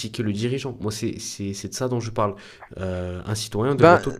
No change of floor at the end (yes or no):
yes